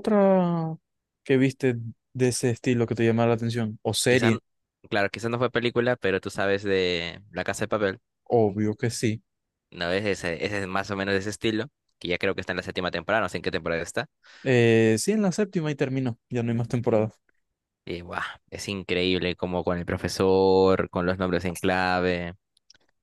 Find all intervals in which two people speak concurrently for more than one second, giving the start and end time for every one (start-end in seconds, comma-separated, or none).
none